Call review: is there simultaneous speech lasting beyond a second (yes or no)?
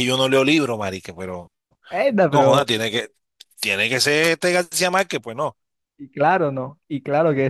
no